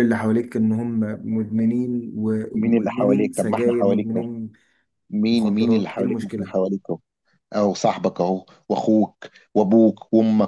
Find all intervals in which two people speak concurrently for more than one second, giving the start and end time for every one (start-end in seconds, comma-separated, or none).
2.5-4.2, 5.3-6.5